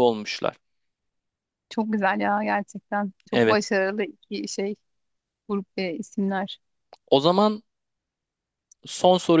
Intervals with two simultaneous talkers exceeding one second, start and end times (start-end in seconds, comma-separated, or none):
none